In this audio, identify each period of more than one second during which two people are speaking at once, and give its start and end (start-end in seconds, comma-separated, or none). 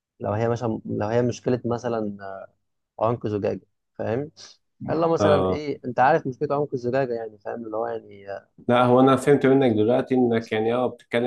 none